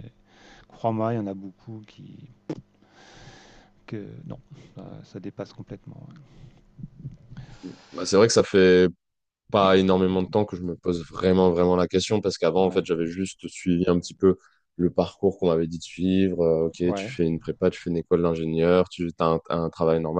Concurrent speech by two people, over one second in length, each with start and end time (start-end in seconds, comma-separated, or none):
none